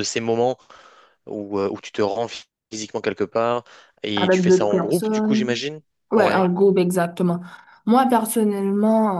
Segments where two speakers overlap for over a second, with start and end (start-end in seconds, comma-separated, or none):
4.2-5.5